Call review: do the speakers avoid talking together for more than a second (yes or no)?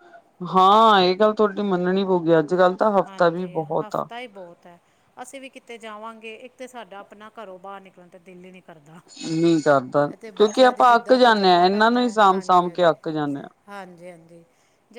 no